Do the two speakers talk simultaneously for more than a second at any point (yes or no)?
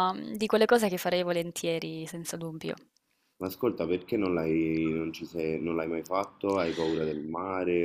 no